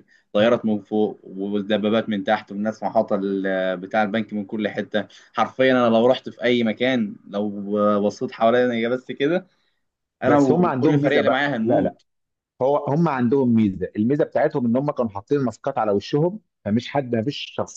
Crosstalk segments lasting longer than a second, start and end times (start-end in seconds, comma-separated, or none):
10.2-11.9